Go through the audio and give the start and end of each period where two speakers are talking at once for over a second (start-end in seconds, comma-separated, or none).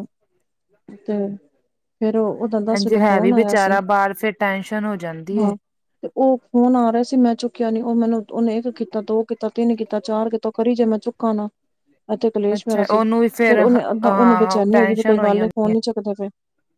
12.6-15.5